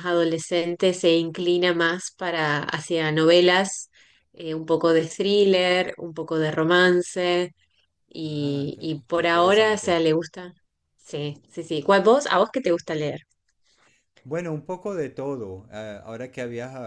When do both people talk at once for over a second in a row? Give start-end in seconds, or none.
8.4-10.0